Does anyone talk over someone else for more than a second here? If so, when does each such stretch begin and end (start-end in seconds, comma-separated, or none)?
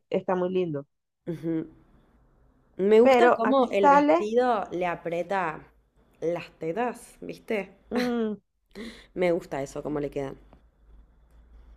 3.0-4.3